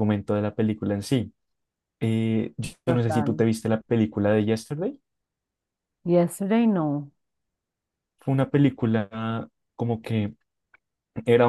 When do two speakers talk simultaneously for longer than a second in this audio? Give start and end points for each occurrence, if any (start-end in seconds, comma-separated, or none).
none